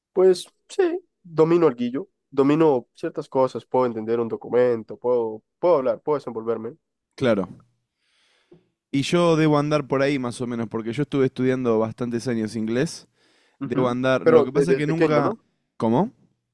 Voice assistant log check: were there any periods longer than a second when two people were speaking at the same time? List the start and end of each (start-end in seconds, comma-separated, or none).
13.6-15.3